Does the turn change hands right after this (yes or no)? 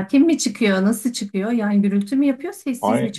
yes